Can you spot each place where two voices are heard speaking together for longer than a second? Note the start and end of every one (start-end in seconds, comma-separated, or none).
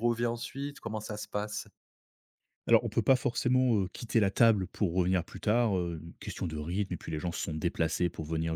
none